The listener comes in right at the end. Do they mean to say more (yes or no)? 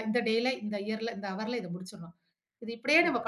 no